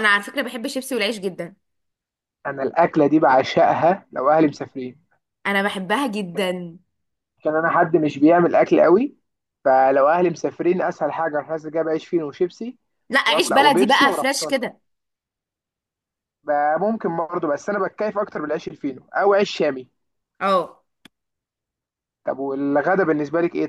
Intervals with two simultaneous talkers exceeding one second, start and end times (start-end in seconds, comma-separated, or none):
13.3-14.6